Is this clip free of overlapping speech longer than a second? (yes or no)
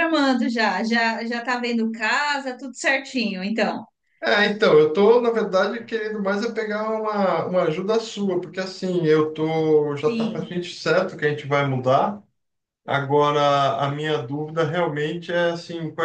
yes